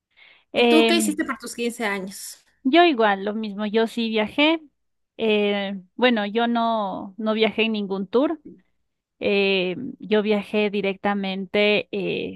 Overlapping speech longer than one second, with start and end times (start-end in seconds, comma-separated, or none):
none